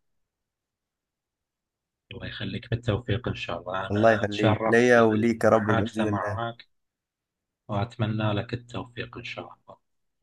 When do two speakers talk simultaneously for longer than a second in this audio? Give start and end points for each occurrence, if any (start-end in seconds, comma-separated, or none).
3.9-6.4